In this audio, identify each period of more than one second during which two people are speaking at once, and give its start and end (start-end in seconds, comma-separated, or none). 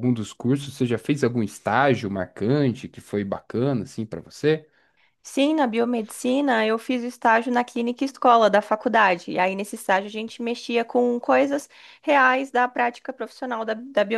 none